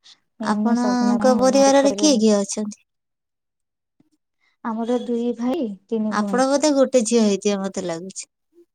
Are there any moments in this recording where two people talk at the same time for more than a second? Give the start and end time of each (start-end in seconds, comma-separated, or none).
0.5-2.1